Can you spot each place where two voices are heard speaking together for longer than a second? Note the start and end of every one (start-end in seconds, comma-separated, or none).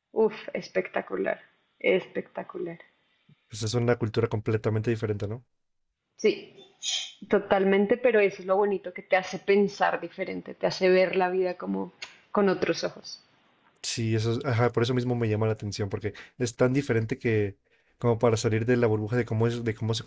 none